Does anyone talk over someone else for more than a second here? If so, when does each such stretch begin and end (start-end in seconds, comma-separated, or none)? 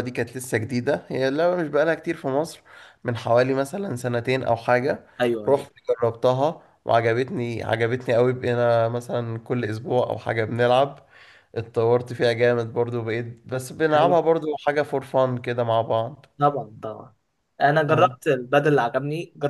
none